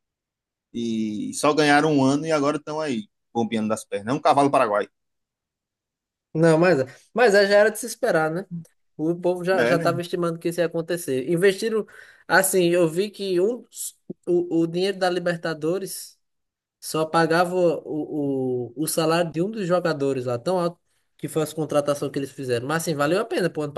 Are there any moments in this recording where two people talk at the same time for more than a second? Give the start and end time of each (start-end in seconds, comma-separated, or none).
none